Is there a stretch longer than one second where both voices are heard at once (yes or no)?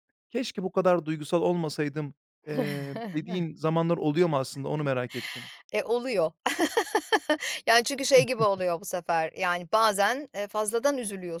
no